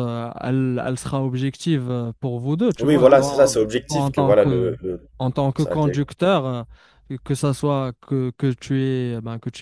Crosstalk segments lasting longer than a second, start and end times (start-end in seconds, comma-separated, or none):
2.8-4.7